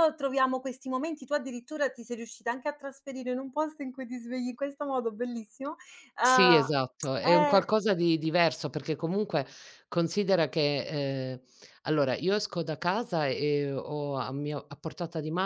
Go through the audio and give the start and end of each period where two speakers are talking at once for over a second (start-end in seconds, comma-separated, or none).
6.2-7.6